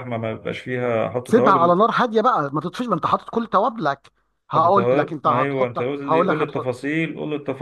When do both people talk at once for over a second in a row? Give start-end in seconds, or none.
4.6-6.7